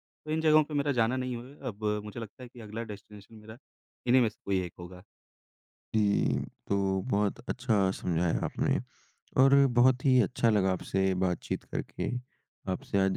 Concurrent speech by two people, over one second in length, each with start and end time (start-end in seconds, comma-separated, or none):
none